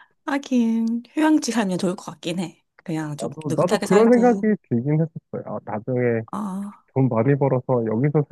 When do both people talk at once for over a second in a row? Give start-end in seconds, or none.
3.2-4.5